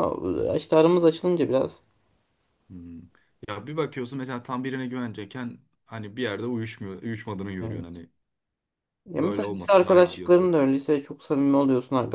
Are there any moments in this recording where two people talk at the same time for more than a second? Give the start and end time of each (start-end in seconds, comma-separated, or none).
9.2-10.5